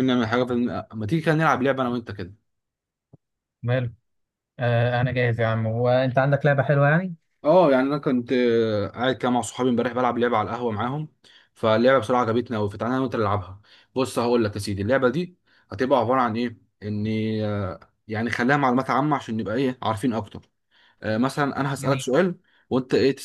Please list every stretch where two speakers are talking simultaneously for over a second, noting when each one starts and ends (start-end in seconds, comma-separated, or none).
none